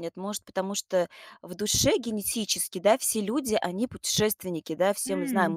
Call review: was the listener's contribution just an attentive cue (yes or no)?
yes